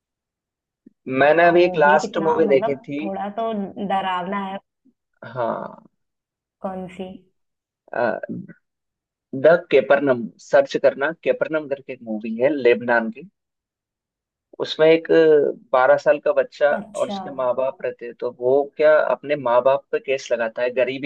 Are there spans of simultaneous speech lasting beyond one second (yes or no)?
yes